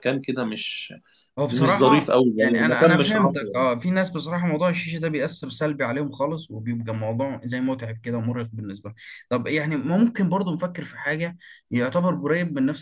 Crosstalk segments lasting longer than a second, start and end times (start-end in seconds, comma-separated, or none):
1.5-3.6